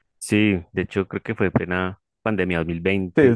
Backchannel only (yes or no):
no